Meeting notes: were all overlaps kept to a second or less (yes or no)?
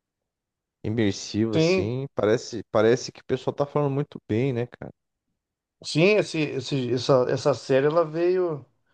yes